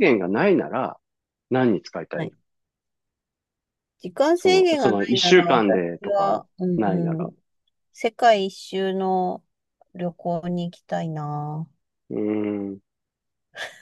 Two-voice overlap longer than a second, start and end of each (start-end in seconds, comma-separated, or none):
4.4-6.4